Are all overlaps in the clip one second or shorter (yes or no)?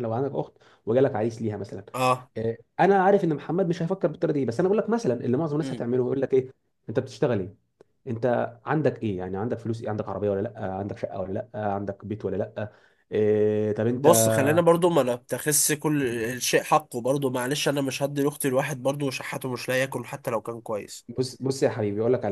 yes